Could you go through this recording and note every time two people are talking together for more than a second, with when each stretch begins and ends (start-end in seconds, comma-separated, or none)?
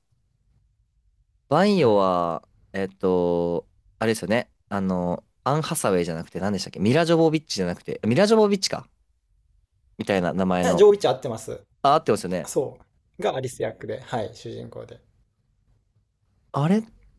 none